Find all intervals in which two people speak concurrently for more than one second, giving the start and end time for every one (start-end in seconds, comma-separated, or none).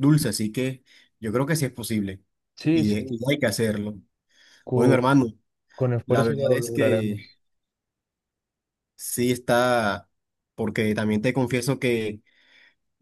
6.0-7.3